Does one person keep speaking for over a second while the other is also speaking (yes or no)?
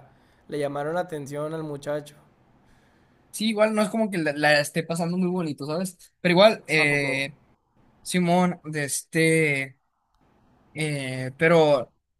no